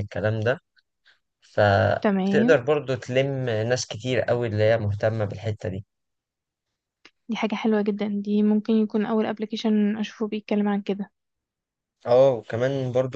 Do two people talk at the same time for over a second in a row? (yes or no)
no